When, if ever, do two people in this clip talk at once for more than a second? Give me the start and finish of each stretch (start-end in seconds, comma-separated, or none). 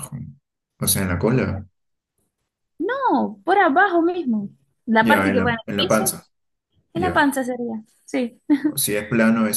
5.0-6.2